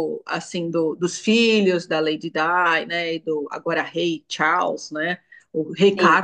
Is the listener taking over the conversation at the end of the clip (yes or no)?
no